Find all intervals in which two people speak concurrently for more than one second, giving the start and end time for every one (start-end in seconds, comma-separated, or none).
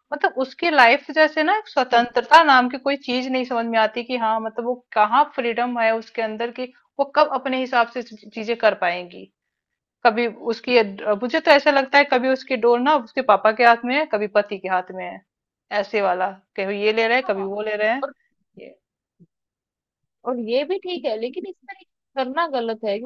none